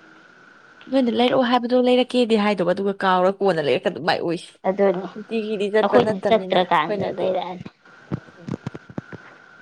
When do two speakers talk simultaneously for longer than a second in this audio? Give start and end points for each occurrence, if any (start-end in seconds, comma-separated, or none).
5.8-7.3